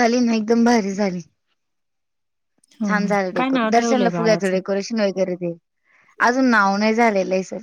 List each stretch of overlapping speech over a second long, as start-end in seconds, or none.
2.9-4.6